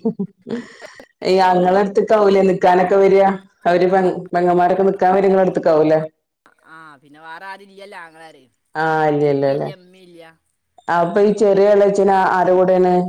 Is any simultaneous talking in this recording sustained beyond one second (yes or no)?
no